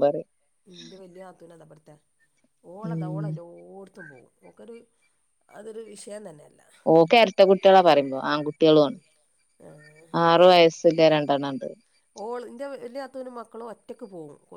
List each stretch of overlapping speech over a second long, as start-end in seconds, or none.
none